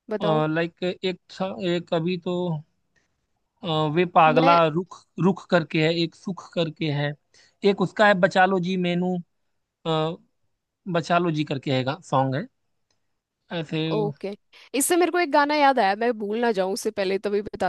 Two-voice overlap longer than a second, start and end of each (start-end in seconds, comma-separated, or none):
none